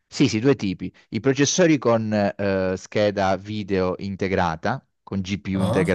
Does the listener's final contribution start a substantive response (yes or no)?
no